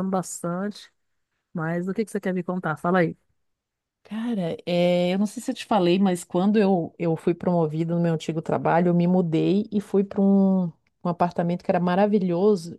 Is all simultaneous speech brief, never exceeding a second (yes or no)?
yes